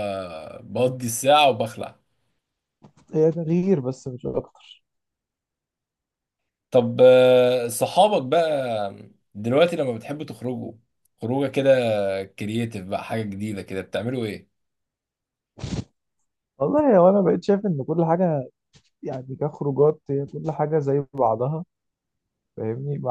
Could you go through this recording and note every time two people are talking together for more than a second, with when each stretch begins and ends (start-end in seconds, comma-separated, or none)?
none